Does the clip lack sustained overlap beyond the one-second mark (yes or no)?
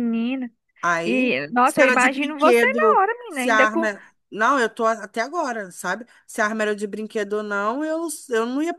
no